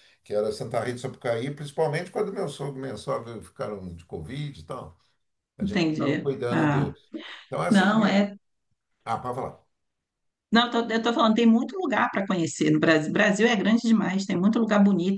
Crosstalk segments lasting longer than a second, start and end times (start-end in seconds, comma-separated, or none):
5.6-6.9